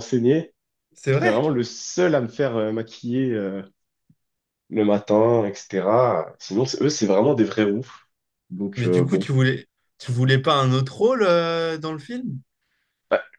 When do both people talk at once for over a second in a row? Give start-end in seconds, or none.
none